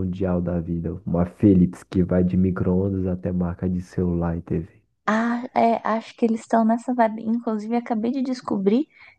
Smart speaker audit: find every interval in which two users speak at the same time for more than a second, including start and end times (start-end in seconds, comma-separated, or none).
none